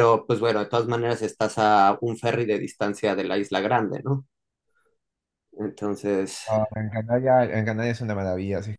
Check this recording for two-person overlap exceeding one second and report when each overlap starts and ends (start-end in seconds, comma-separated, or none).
none